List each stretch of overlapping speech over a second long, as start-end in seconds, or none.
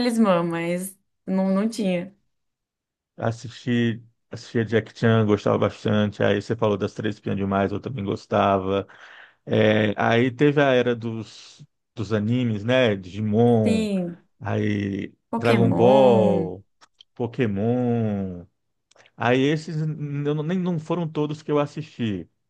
15.3-16.5